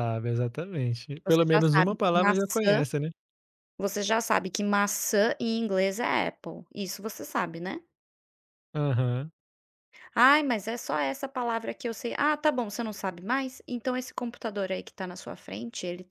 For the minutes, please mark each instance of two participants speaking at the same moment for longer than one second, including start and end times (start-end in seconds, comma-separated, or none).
1.2-2.8